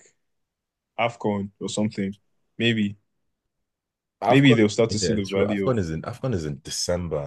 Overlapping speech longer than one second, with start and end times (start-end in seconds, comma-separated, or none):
4.3-5.7